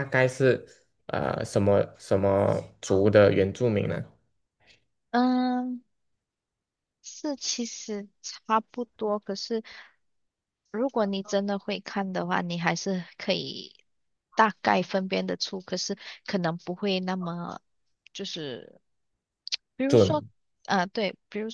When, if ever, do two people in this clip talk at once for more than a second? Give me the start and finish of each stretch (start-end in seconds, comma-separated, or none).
none